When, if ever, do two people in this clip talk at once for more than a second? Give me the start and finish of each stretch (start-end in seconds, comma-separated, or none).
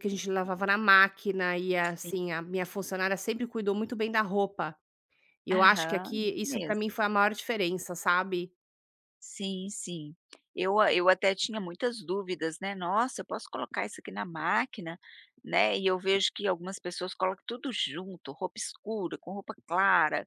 5.5-6.8